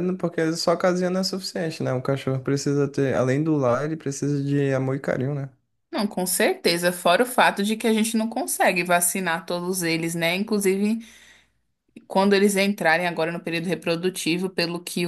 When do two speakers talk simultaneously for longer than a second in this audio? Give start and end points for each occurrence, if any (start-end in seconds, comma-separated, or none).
none